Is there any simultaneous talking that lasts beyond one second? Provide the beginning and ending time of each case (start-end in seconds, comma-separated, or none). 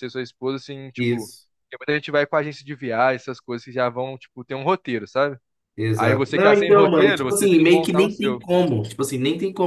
6.0-8.4